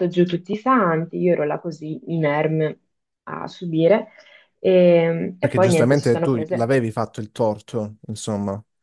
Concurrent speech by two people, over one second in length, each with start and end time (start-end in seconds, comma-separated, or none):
5.4-6.8